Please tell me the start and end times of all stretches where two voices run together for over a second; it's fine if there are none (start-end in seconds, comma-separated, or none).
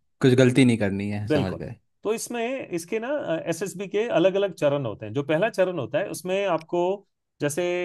none